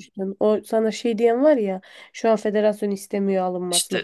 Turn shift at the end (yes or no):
yes